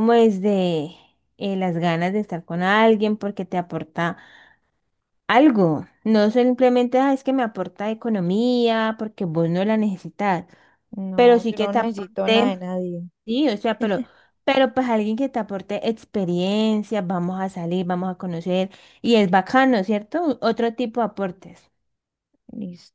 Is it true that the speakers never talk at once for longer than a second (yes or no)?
no